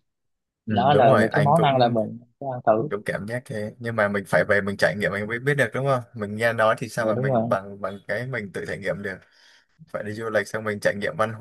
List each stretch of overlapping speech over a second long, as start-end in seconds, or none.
0.7-2.0